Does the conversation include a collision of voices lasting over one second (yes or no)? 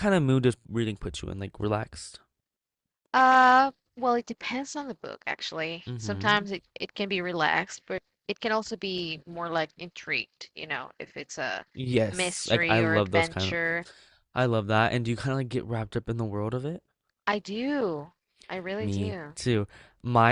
yes